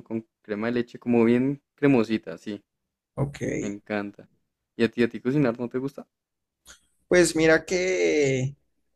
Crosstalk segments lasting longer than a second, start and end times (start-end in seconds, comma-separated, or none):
none